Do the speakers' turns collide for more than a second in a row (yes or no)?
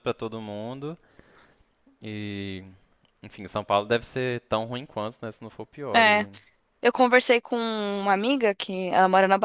no